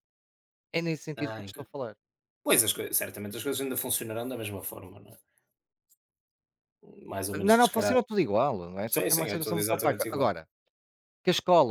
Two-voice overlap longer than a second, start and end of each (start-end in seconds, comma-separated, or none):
8.9-10.3